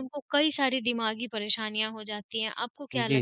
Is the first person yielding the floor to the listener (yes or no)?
yes